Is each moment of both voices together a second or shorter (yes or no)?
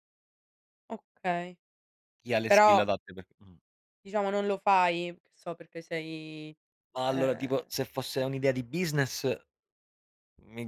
no